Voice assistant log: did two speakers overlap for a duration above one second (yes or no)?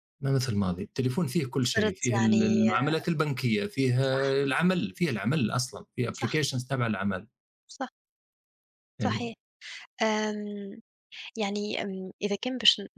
yes